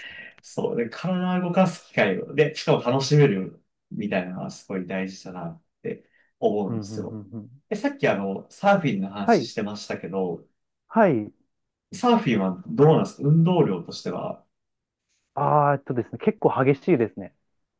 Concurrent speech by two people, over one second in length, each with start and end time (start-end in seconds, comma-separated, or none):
none